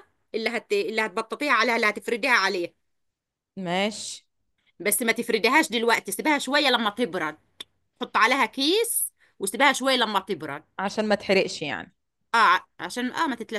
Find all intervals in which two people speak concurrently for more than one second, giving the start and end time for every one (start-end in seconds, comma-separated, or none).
none